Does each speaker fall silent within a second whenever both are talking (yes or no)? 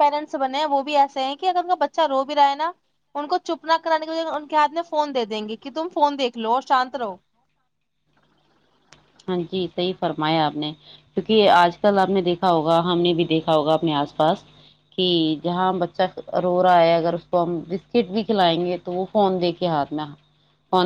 yes